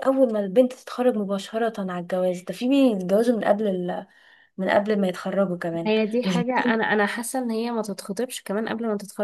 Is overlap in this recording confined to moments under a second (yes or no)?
yes